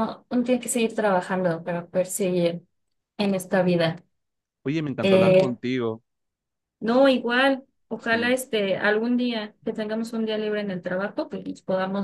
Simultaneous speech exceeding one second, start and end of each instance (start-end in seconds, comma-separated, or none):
none